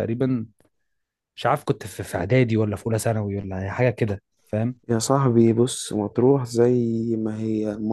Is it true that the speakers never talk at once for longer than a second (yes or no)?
yes